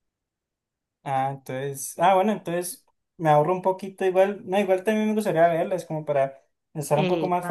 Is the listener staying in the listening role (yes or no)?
yes